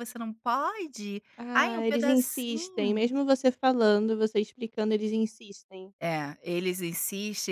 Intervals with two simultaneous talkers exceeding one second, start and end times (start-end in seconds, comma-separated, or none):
1.4-3.0